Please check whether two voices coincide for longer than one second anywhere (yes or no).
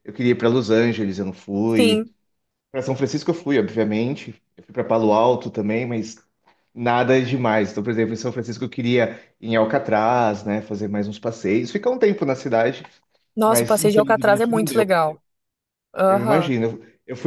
yes